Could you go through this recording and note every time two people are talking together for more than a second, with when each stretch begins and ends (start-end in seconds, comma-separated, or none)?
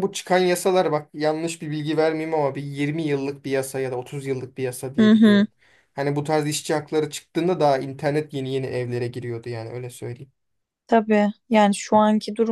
none